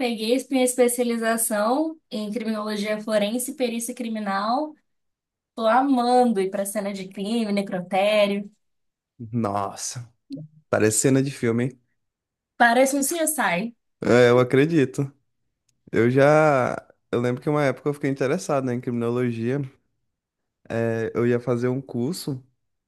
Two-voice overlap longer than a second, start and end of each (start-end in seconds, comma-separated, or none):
none